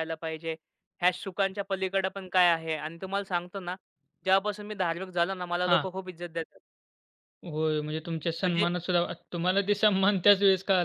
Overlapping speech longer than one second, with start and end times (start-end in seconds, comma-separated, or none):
none